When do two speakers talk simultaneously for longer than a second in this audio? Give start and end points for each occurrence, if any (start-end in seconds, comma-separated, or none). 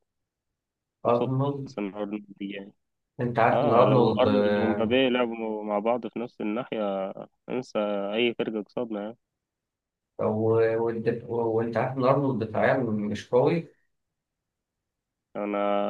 3.5-5.0